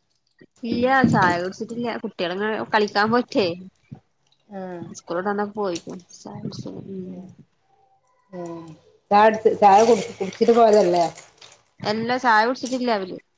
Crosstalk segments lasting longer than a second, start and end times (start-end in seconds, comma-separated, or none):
none